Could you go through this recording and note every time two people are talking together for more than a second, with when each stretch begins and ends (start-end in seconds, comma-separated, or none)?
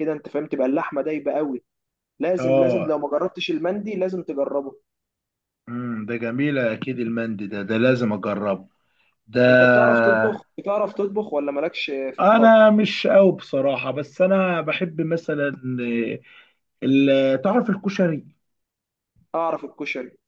none